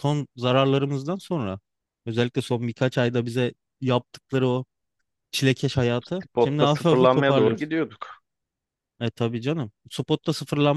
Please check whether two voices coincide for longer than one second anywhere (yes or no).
yes